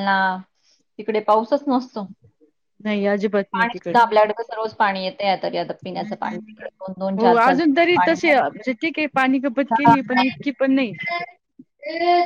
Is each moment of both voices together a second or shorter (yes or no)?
yes